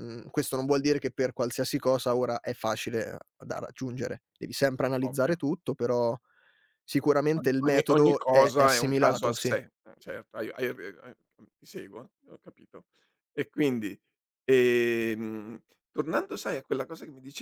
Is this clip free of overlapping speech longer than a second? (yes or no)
no